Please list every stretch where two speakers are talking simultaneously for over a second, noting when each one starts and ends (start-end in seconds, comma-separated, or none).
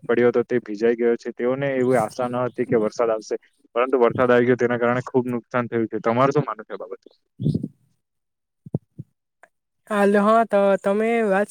none